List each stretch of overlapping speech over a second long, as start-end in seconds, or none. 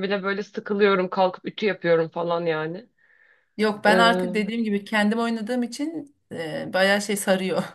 none